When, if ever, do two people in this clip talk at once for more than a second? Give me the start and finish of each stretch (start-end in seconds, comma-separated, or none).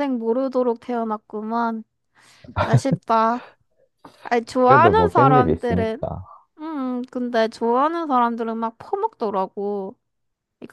4.6-6.0